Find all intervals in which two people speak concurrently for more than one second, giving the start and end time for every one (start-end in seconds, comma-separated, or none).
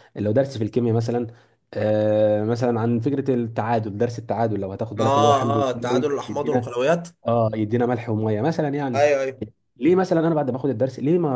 5.0-6.7